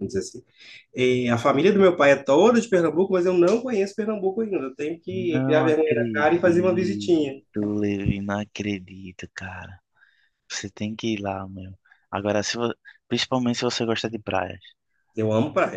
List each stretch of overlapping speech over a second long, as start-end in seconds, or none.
5.1-7.0